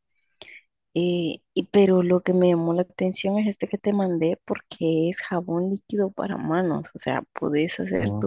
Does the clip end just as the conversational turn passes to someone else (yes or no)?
no